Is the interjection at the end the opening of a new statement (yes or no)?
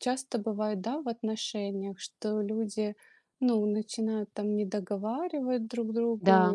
no